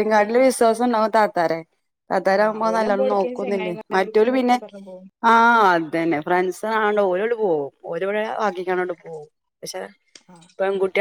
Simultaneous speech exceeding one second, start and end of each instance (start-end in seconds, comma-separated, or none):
2.4-4.6